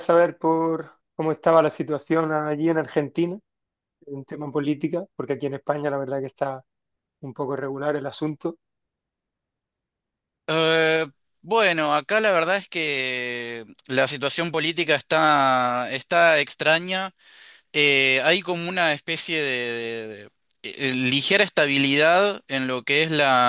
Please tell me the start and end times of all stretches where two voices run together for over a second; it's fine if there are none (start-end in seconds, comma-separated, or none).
none